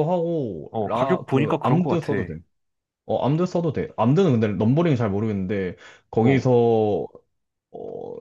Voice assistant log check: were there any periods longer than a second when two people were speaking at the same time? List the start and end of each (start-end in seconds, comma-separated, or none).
0.7-2.1